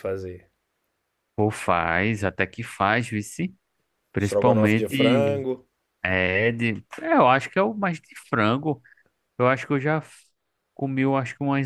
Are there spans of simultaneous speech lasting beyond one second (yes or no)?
yes